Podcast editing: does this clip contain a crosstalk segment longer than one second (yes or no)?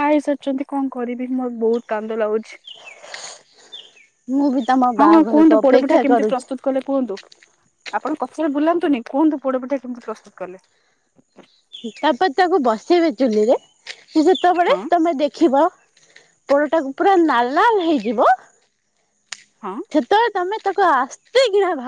yes